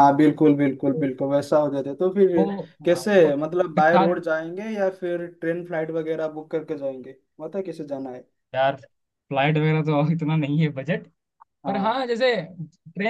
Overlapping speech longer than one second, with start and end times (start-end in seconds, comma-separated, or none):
2.9-4.2